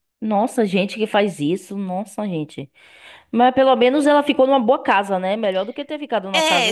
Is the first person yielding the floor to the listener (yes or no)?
yes